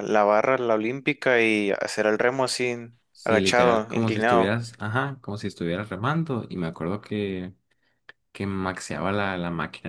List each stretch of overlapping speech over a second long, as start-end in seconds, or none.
3.2-4.5